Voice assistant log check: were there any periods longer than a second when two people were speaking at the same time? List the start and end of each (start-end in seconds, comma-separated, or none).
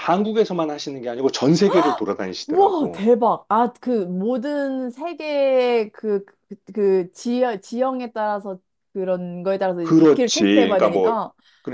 9.8-11.2